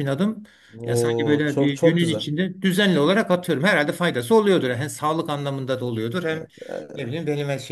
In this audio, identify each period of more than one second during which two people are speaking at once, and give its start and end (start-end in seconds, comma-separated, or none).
0.9-2.3